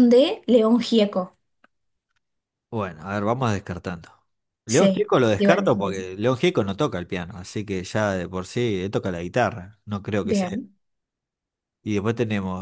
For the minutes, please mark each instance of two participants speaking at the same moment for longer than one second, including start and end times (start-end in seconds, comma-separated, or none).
4.7-6.0